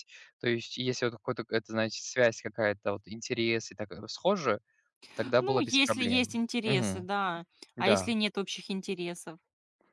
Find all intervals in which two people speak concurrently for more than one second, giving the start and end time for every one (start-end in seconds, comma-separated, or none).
5.4-7.1